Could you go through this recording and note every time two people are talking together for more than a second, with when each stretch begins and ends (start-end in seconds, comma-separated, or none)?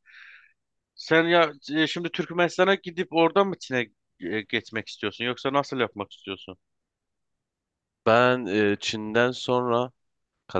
none